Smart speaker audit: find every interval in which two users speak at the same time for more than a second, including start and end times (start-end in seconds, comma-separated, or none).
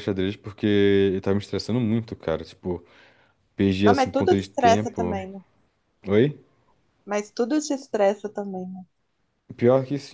3.8-5.2